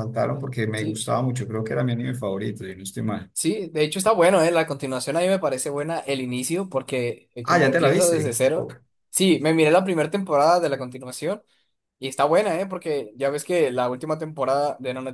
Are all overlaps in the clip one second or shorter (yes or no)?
no